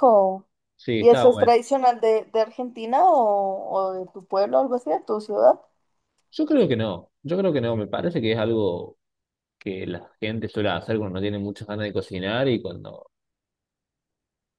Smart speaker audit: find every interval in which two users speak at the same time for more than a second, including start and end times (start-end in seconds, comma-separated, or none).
none